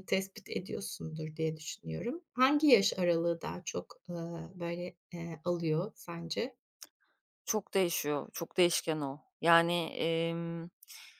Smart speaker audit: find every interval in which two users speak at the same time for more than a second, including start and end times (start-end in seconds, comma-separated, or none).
none